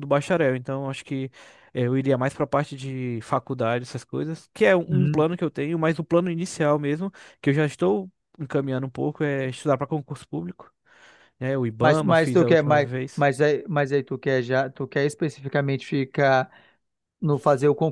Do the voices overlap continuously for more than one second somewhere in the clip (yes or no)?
yes